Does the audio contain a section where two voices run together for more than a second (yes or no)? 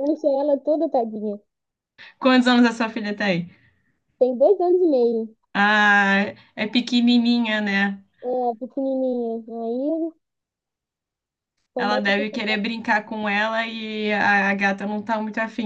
no